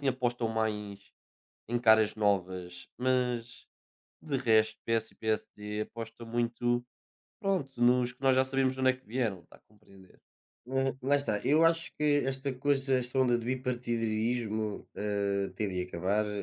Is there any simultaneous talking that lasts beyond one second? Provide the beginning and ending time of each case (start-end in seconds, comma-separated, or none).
none